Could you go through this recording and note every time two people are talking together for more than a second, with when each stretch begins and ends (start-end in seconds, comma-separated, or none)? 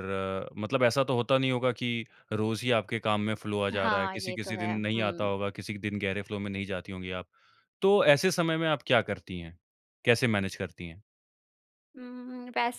3.7-5.3